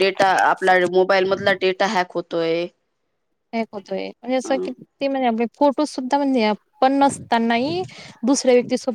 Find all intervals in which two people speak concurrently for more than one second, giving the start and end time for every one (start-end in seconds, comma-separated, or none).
none